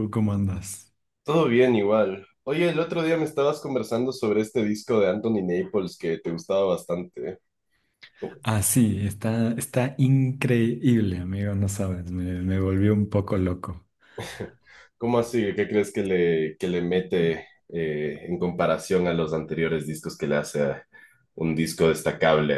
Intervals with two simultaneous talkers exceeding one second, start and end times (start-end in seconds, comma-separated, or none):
none